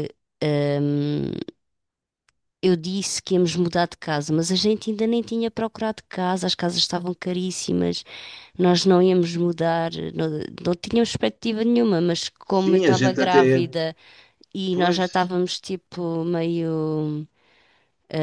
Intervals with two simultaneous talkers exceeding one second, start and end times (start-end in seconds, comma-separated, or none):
12.5-13.7